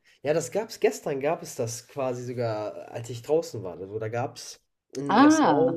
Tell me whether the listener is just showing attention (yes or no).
yes